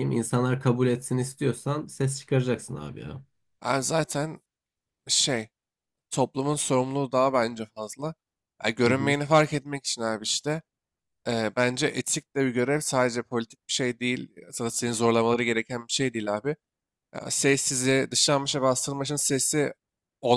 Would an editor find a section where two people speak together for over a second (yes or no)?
no